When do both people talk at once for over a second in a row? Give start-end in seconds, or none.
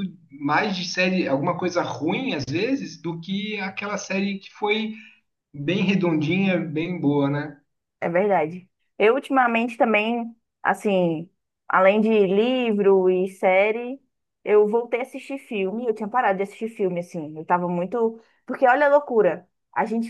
none